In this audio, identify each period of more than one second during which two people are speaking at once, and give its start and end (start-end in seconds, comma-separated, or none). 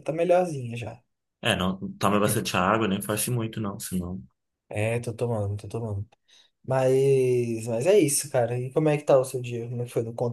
none